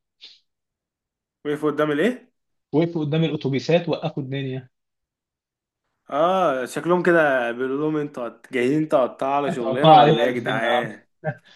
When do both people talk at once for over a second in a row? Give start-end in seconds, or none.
9.5-11.1